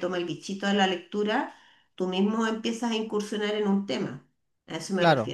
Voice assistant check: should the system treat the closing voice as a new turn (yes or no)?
yes